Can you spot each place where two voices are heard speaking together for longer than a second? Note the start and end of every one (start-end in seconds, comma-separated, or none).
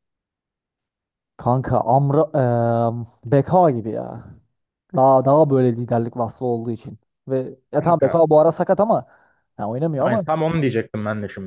none